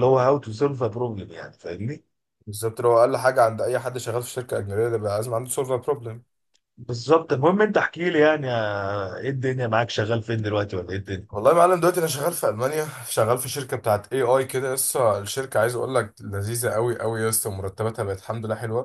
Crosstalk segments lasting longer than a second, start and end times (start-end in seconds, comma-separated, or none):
none